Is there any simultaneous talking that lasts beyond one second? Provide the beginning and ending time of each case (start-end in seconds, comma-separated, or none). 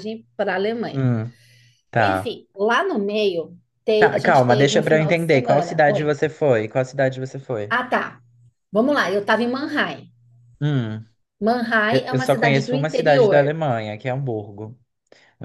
4.0-6.1, 11.9-13.6